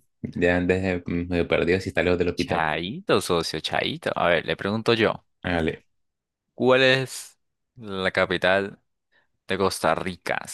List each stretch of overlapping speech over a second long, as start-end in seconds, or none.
none